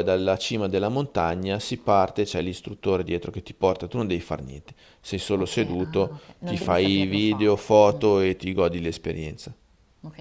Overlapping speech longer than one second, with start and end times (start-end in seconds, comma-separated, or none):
5.3-8.0